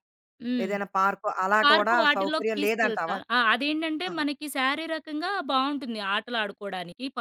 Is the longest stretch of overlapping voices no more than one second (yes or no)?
no